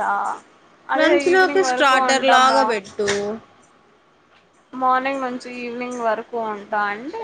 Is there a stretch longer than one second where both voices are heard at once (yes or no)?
yes